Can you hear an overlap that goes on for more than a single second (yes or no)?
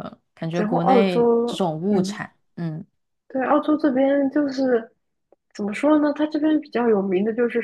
yes